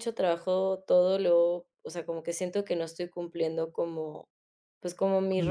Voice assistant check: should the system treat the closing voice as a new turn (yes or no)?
no